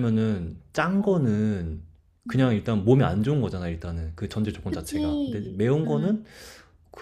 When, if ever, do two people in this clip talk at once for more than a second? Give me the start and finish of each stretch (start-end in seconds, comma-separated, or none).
4.7-6.2